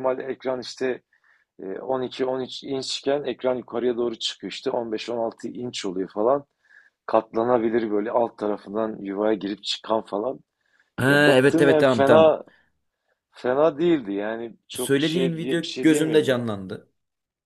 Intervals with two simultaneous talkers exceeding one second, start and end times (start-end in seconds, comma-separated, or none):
11.1-12.4, 14.7-16.4